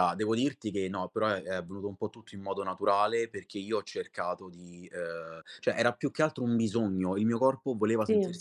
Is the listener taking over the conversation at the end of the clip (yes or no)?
no